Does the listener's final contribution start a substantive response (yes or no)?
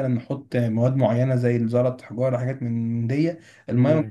yes